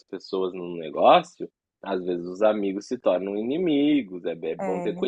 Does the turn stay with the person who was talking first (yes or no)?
no